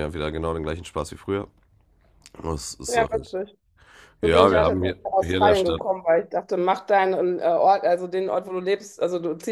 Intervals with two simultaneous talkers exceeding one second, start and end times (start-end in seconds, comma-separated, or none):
4.2-5.8